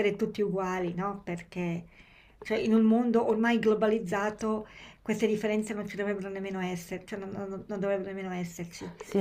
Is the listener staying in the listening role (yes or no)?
no